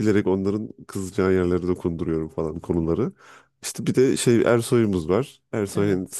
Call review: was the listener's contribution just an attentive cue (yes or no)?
yes